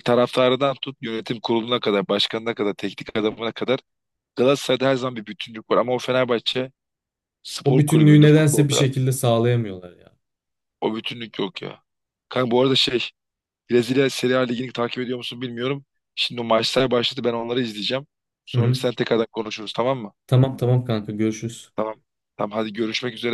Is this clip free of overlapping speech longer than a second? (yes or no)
no